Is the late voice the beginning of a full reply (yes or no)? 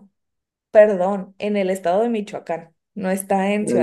no